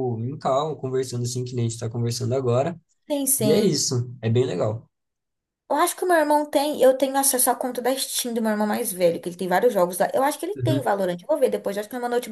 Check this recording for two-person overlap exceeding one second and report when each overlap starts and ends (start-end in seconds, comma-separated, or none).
none